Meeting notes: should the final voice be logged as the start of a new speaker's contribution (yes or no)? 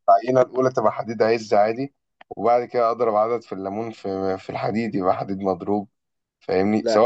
no